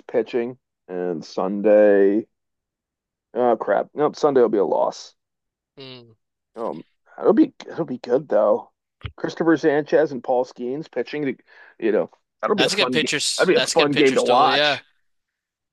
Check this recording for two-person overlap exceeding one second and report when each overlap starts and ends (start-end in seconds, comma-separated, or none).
12.6-14.8